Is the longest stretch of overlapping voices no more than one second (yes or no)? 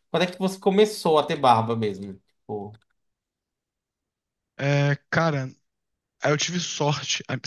yes